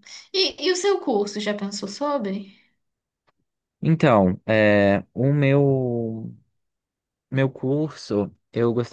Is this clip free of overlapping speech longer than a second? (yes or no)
yes